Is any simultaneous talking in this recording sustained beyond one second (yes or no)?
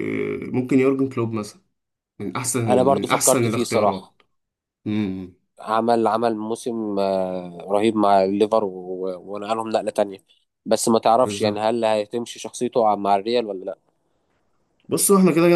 yes